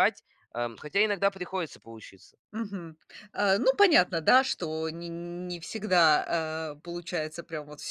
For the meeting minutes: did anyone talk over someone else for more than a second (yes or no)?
no